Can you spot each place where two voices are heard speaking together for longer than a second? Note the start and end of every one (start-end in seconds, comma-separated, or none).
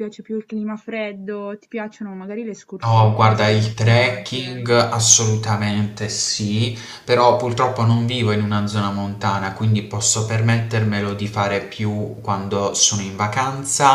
2.8-4.7